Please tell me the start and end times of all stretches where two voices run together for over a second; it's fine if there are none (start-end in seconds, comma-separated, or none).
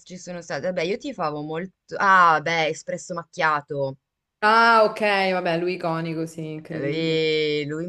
none